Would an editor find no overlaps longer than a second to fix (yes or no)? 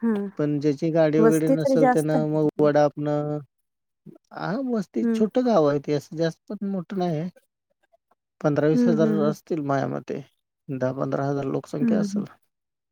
no